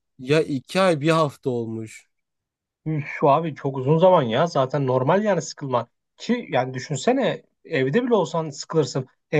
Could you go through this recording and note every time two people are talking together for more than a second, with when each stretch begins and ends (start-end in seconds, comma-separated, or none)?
none